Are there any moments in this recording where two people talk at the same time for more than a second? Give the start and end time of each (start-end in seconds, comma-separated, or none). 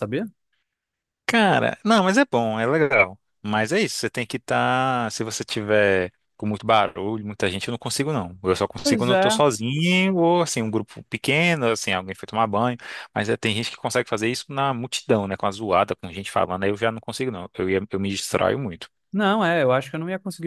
none